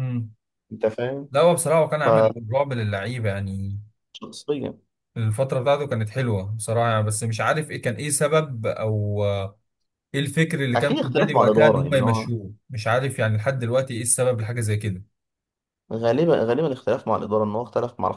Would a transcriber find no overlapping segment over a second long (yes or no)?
no